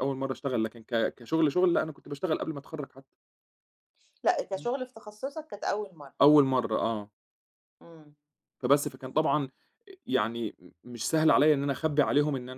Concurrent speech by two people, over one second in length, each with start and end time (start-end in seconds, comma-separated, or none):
none